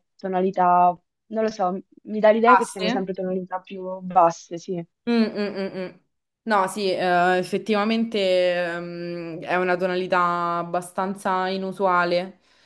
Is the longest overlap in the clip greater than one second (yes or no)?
no